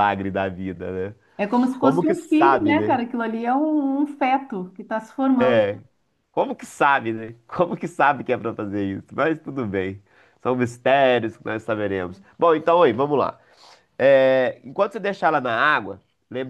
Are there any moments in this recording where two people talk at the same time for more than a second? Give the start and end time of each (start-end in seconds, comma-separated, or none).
1.8-3.0